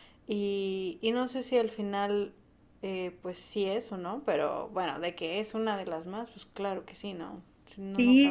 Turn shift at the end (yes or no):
yes